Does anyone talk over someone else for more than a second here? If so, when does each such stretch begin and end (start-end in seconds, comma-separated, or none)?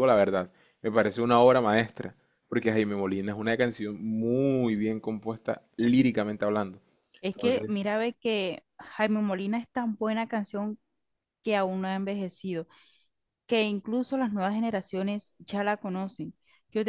none